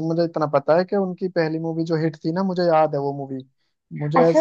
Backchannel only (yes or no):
no